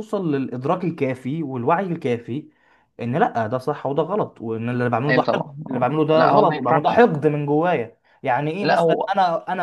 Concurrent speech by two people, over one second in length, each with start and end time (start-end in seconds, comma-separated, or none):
5.1-7.0